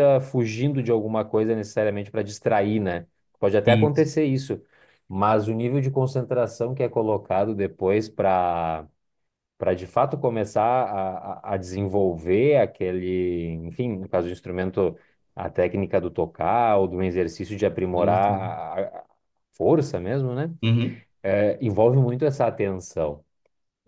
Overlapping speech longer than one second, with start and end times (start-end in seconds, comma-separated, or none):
none